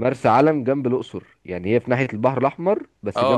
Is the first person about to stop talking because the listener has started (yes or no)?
yes